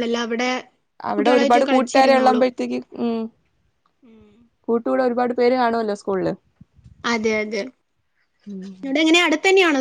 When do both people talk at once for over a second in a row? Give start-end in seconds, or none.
1.1-2.5